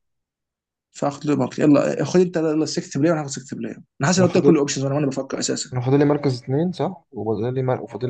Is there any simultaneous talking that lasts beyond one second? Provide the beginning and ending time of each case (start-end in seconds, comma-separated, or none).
none